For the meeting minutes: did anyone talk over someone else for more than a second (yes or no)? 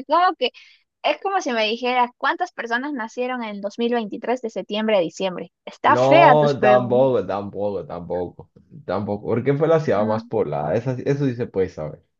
yes